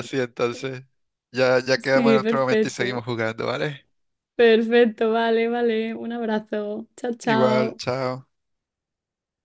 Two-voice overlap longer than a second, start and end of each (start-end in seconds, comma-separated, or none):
1.8-3.0